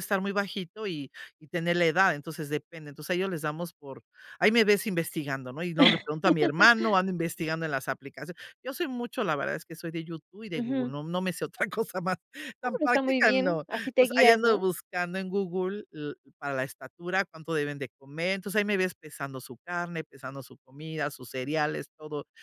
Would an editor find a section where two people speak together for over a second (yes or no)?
yes